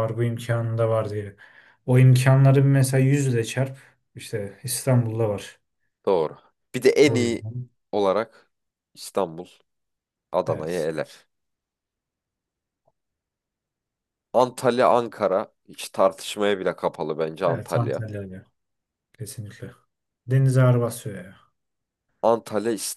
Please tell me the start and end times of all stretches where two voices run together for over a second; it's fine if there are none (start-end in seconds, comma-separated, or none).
none